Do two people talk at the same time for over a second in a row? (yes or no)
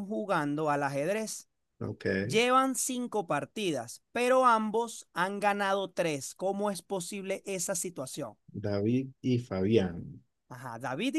no